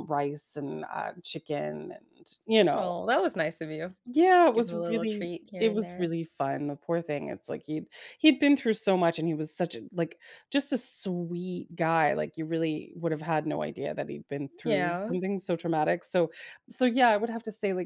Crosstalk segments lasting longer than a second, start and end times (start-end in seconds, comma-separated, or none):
4.5-6.1